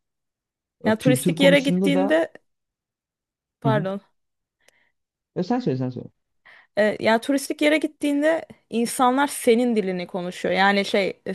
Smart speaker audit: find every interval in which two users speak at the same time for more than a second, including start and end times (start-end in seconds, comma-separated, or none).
0.8-2.2